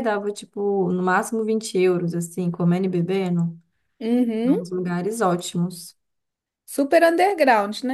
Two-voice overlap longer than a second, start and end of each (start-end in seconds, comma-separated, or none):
none